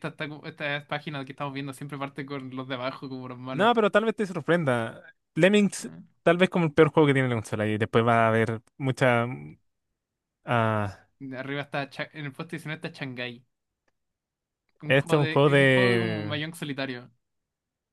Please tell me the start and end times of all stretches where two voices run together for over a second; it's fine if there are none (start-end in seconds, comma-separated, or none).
14.9-16.4